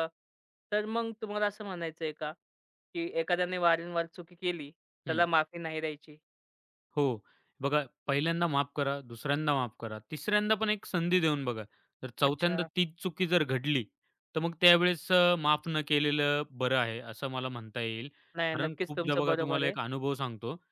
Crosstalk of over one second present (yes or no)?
yes